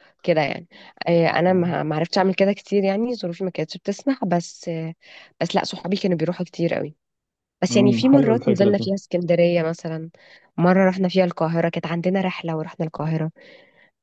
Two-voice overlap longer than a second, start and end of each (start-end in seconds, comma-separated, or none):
7.7-8.9